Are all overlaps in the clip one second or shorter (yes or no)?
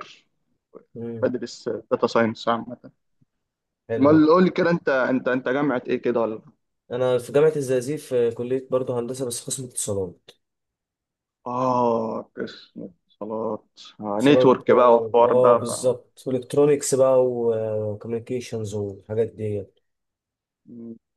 no